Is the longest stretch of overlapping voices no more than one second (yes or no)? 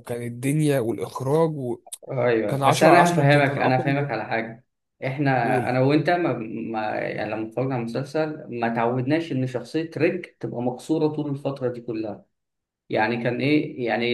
no